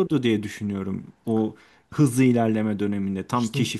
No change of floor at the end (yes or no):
yes